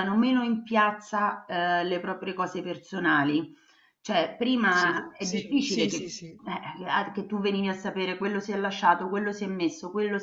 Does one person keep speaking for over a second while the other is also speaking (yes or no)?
yes